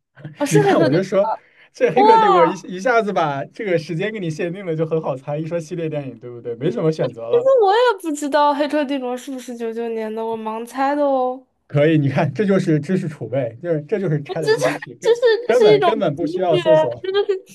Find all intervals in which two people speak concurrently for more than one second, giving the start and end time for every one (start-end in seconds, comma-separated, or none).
14.3-16.6